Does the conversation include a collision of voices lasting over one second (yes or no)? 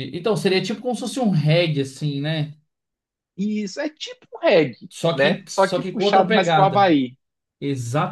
yes